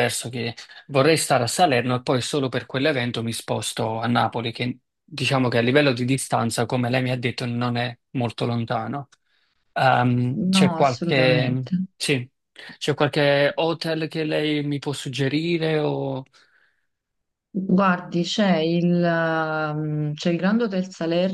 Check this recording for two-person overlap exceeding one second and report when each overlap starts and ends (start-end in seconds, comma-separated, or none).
10.4-11.8